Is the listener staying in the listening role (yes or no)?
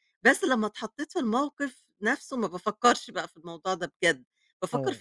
yes